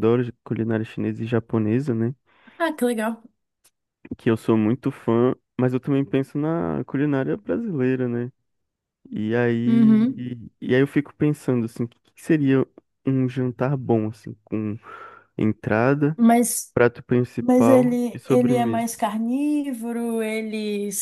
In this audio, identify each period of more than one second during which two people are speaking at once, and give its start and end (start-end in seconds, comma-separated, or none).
17.4-18.9